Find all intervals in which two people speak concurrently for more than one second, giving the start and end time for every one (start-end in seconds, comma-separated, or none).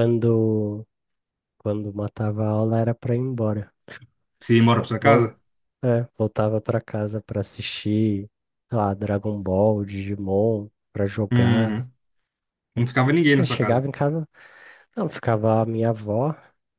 none